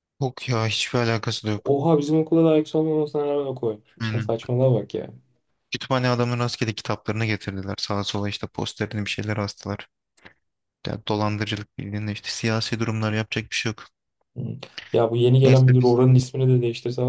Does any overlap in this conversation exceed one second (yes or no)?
no